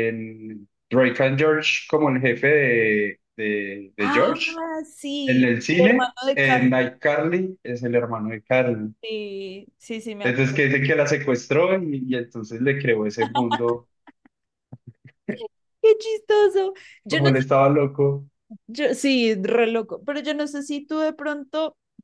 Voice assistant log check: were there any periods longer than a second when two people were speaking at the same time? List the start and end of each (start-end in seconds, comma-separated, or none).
5.2-6.9